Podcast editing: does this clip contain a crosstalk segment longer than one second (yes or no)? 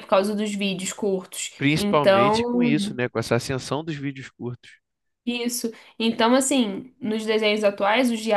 yes